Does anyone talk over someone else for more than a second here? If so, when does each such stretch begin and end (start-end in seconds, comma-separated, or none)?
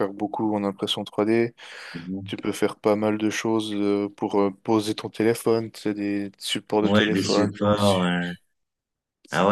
6.8-8.2